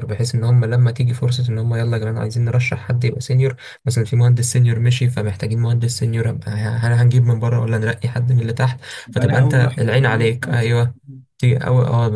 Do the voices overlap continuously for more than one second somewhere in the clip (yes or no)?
yes